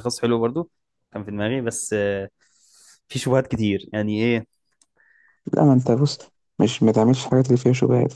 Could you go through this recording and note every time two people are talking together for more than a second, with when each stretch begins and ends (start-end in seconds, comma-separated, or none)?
none